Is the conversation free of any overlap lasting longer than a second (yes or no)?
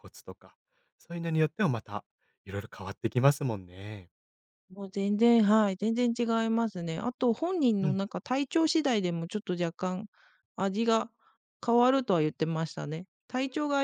yes